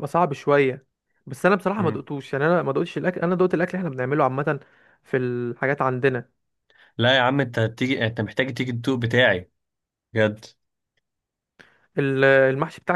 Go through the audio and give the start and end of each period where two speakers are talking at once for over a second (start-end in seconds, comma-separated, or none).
none